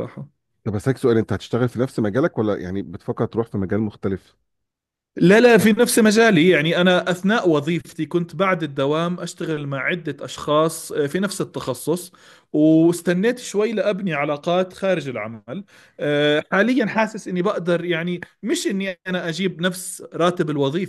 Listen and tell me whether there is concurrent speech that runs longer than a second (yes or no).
no